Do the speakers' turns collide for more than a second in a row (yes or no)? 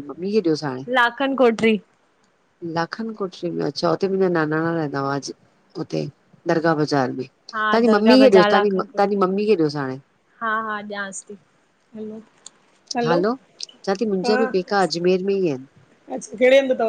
yes